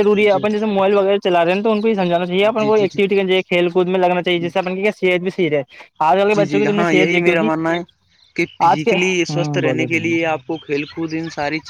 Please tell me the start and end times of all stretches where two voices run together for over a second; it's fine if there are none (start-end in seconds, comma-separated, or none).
8.7-10.2